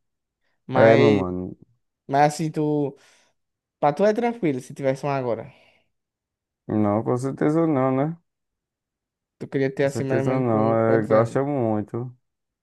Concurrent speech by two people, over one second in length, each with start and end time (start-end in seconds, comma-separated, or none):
9.8-11.4